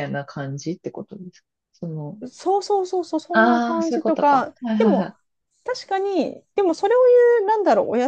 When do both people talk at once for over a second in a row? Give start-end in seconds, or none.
3.3-5.1